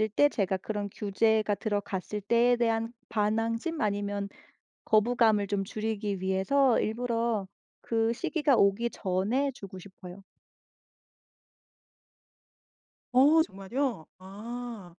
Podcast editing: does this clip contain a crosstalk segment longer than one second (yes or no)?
no